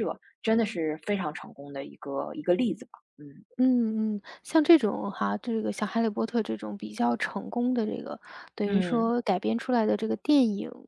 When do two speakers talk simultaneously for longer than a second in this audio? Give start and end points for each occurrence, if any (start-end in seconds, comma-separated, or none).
none